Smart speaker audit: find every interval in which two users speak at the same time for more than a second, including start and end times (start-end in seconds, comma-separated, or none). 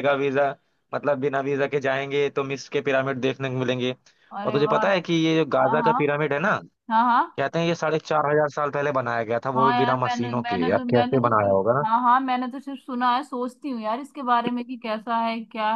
9.6-11.8